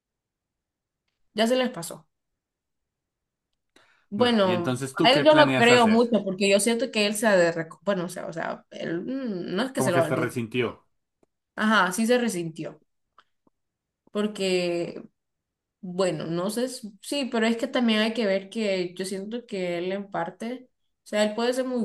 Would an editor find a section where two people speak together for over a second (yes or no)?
yes